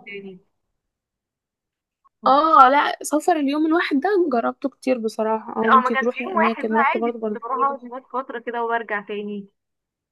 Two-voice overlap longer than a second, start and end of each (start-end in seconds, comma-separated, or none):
5.7-7.8